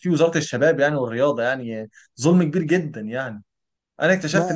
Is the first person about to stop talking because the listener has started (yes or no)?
no